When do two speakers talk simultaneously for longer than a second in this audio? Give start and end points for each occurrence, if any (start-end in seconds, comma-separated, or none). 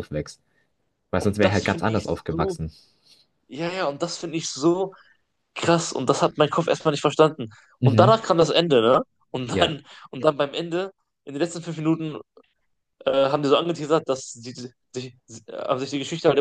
1.1-2.6